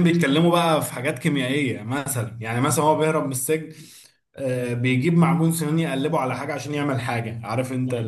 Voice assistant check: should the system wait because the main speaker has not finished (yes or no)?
no